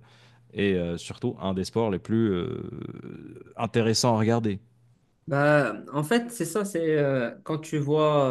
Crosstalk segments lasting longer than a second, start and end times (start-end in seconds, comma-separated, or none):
none